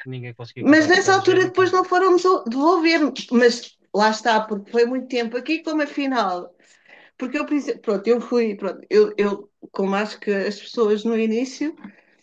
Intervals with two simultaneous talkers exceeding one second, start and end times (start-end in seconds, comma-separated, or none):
0.6-1.9